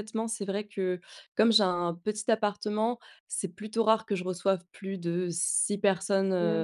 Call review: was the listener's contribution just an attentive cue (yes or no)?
yes